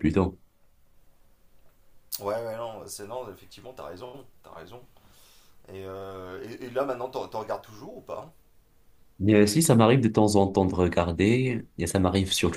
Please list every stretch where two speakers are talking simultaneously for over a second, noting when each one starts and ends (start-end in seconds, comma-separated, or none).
none